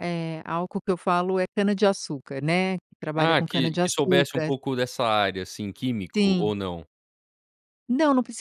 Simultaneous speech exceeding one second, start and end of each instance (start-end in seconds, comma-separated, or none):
3.1-4.5